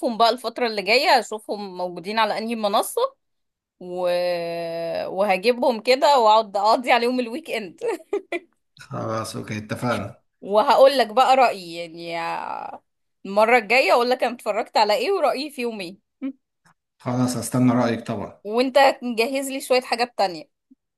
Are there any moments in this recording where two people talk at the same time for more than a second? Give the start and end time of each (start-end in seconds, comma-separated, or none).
none